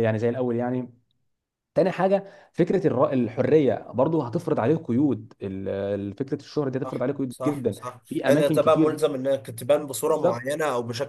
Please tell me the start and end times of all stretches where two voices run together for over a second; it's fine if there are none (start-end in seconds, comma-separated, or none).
6.8-9.0